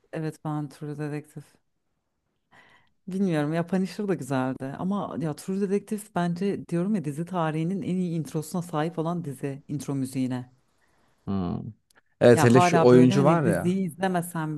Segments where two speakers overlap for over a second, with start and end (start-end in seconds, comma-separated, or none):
12.3-13.8